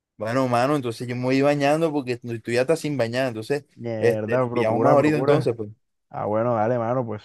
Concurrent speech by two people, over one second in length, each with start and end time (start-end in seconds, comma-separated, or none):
3.8-5.6